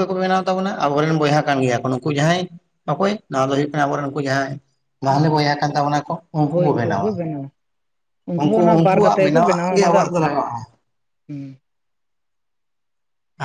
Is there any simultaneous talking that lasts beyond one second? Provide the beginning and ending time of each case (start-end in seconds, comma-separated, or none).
8.8-10.3